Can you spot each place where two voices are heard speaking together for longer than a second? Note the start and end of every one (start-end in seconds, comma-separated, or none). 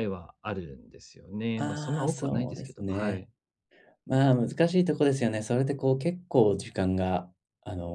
1.6-3.3